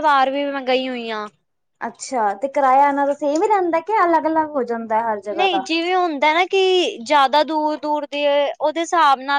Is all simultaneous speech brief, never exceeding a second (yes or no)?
yes